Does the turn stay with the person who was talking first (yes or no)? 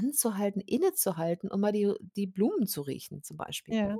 yes